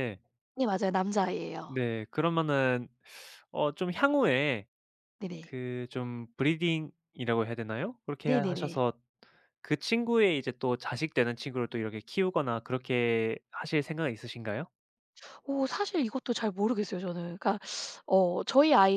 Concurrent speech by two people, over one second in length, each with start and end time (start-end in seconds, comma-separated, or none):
none